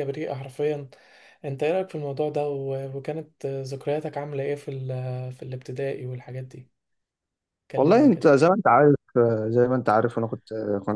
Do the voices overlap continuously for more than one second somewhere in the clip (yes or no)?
no